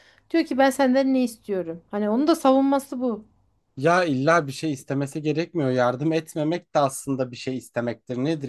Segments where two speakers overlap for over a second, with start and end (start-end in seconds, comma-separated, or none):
none